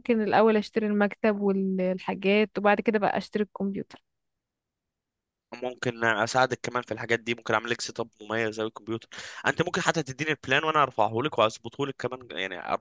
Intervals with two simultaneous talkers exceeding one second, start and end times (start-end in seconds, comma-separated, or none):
none